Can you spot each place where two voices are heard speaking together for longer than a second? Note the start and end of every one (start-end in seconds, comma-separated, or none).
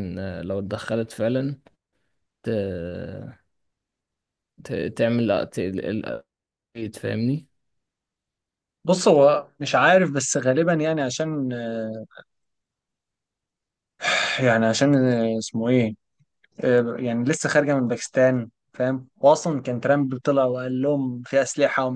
none